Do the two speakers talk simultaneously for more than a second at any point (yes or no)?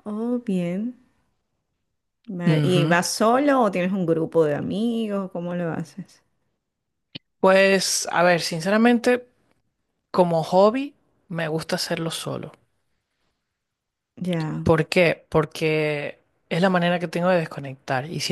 no